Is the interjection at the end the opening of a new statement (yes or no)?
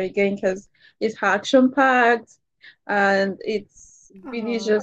no